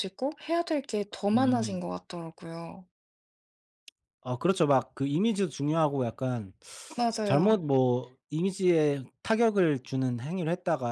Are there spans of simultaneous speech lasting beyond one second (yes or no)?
no